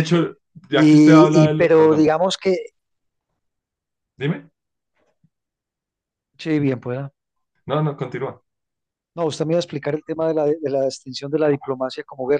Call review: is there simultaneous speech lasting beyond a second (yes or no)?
yes